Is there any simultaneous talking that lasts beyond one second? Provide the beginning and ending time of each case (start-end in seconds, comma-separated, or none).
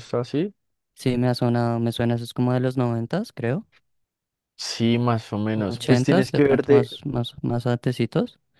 5.5-6.9